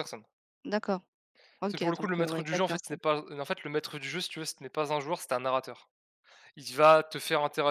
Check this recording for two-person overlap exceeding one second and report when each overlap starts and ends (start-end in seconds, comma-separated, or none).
1.7-3.0